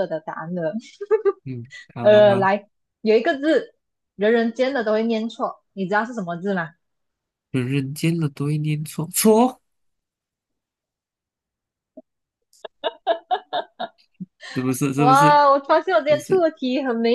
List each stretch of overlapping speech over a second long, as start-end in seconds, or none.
none